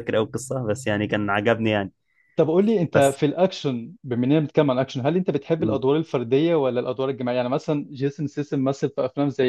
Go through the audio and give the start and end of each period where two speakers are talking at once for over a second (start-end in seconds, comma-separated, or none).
none